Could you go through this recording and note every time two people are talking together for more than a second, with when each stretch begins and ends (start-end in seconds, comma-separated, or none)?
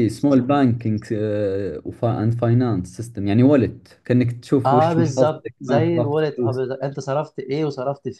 4.7-6.6